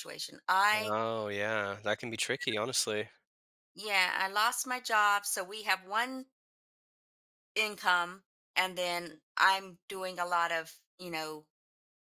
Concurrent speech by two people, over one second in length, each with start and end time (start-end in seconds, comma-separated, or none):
none